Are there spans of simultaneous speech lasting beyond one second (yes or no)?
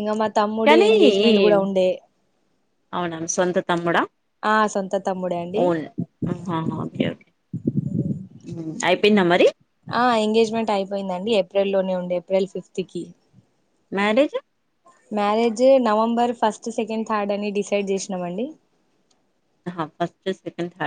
no